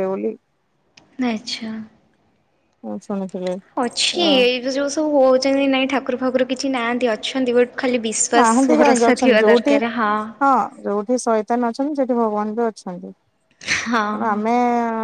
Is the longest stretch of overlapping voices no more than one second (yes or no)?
no